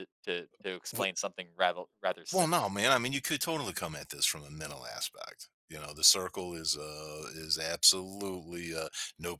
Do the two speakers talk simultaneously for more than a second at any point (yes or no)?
no